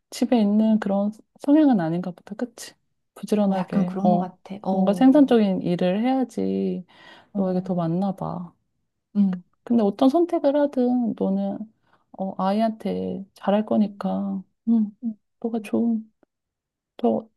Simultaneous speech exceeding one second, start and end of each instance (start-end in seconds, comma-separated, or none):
3.5-5.3